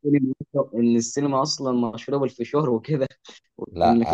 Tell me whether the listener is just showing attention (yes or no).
no